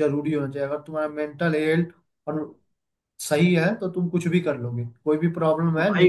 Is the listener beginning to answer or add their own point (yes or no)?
no